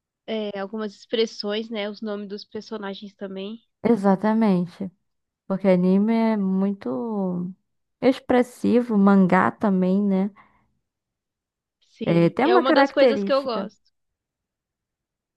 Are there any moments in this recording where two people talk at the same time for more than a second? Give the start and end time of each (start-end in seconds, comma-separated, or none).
12.0-13.7